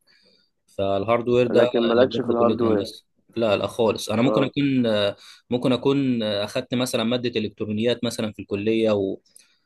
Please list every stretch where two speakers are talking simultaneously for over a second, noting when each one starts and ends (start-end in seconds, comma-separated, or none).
1.5-2.8